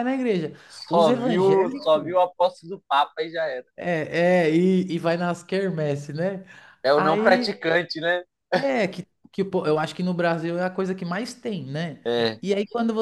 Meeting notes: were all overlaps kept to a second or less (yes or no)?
no